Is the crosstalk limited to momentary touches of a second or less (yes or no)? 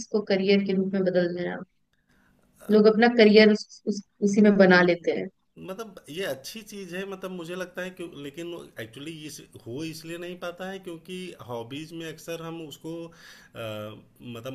yes